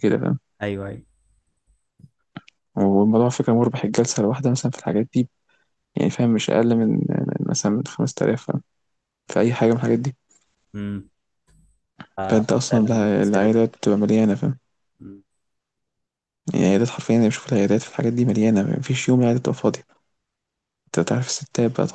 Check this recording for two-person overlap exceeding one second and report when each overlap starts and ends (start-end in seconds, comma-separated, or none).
12.3-13.7